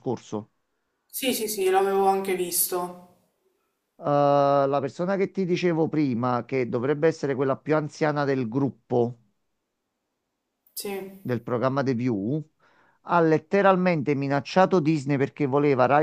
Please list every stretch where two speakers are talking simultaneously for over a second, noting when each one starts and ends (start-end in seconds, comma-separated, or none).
none